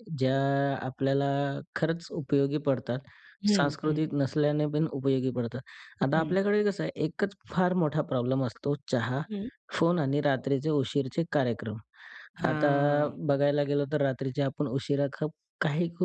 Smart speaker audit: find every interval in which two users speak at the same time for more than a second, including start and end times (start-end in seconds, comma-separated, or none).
none